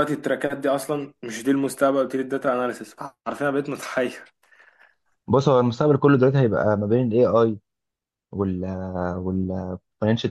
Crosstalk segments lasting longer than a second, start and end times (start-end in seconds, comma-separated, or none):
none